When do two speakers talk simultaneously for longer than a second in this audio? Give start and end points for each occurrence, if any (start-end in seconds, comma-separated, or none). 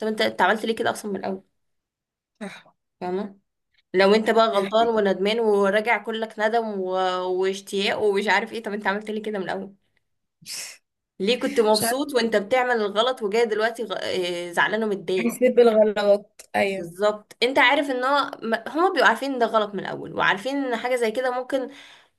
none